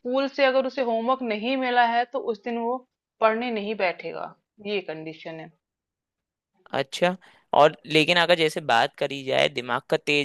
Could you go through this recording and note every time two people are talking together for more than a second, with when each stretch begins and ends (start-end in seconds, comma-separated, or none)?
none